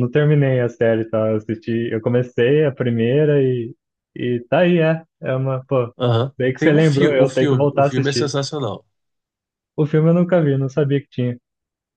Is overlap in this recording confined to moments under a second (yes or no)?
no